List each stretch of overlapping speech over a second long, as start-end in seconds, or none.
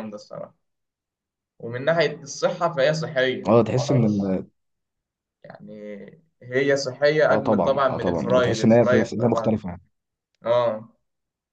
7.3-9.6